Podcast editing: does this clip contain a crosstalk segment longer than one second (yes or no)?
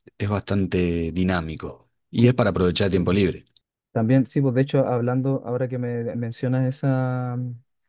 no